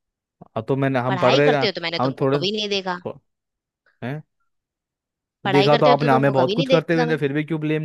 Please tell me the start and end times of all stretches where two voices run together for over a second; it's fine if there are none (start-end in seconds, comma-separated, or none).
1.1-3.0, 5.4-7.2